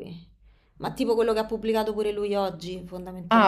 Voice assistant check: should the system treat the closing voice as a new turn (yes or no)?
yes